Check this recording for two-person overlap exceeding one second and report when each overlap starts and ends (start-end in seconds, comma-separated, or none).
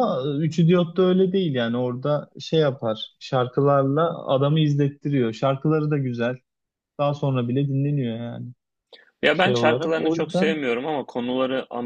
9.3-10.6